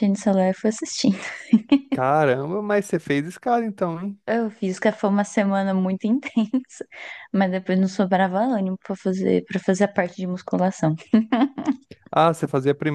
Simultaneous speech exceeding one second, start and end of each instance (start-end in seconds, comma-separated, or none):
none